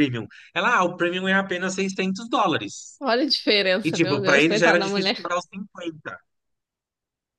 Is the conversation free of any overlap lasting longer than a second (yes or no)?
no